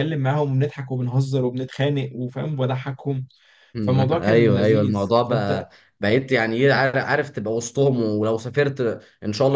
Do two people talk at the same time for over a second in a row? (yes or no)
yes